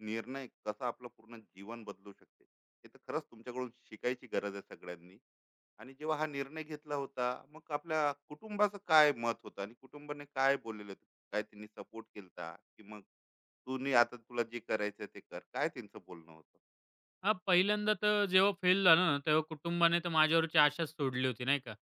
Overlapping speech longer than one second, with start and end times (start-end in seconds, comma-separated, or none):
none